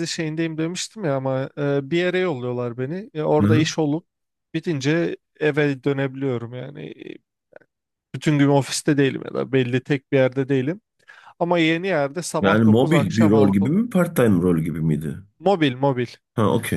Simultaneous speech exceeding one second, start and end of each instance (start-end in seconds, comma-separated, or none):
12.4-13.7